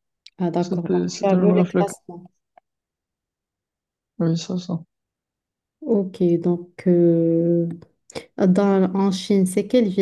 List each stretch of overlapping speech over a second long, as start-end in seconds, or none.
0.6-1.9